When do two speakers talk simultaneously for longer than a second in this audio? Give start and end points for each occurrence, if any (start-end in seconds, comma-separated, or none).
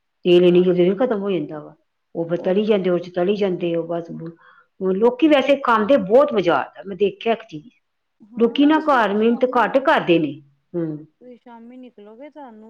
8.4-10.1